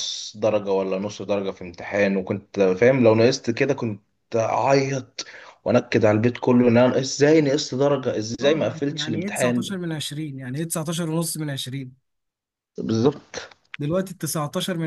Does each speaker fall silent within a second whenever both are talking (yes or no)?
no